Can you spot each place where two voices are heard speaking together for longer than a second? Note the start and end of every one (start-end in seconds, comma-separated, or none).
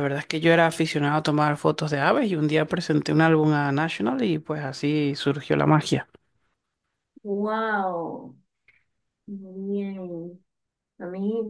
none